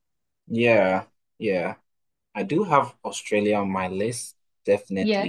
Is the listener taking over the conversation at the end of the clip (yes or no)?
no